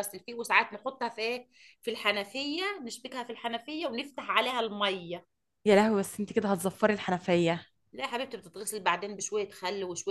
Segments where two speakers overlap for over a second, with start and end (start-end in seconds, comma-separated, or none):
none